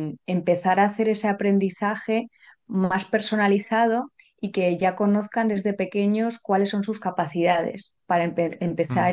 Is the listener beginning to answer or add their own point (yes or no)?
no